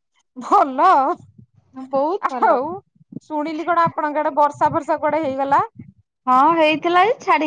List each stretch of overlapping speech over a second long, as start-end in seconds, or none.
none